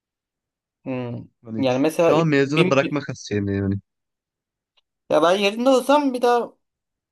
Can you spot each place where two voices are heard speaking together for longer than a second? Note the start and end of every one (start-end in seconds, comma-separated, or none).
1.4-3.1